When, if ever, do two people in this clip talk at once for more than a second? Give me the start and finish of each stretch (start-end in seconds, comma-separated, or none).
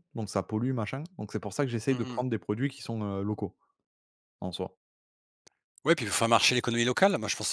none